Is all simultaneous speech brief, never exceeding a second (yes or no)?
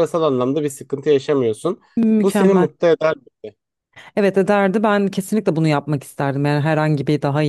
yes